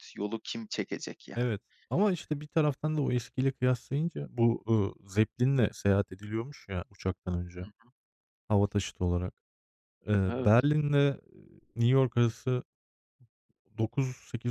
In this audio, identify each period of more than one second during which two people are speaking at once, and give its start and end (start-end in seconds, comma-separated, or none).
none